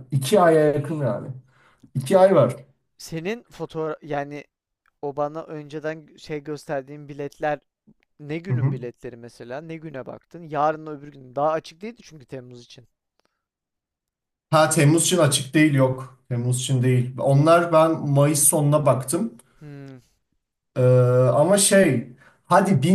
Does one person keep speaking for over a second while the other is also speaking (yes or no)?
no